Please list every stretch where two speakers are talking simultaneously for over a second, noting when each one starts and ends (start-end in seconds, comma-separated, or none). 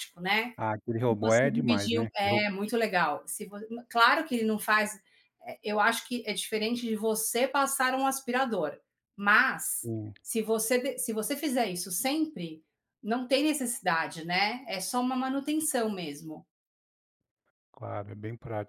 1.1-2.5